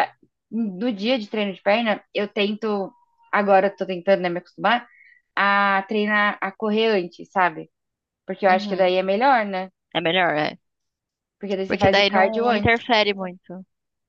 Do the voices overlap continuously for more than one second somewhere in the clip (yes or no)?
yes